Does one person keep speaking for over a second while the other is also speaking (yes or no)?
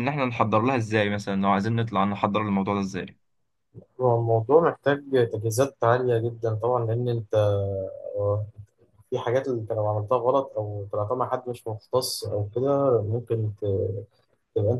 no